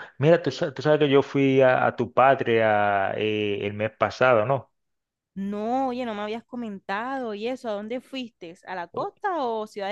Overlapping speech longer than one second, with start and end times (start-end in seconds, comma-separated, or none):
none